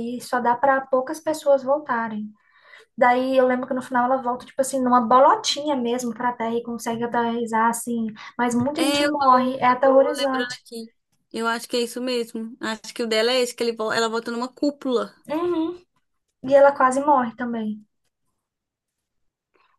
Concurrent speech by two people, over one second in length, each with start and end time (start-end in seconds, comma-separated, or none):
8.8-10.6